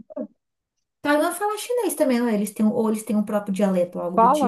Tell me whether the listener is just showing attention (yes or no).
no